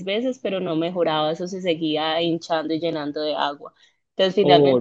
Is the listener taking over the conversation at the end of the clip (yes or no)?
no